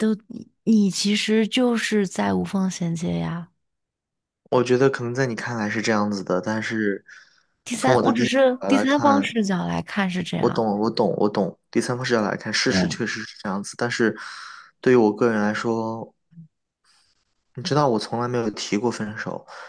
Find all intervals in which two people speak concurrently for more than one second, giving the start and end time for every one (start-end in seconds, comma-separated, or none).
7.8-9.4